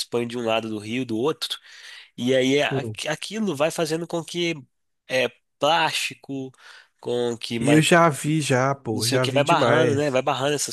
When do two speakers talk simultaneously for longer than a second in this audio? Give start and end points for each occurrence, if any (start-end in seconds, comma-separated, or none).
8.9-10.2